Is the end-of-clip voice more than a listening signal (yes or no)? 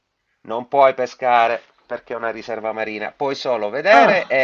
no